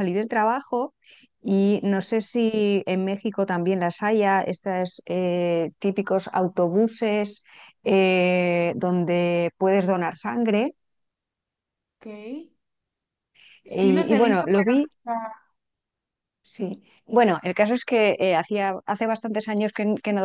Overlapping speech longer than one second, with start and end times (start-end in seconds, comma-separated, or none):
13.6-14.9